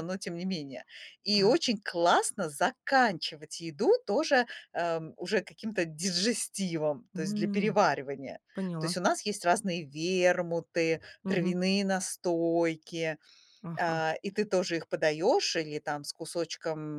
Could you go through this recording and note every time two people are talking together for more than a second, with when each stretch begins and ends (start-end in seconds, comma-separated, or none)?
none